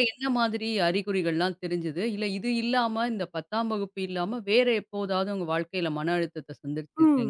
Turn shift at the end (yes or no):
yes